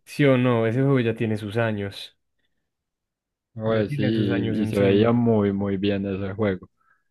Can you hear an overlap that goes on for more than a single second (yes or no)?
yes